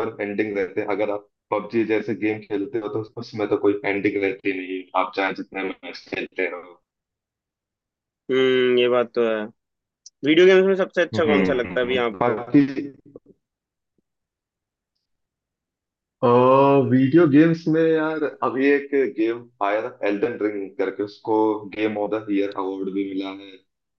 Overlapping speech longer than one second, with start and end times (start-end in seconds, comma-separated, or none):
11.1-12.4